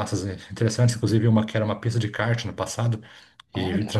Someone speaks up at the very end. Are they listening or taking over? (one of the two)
listening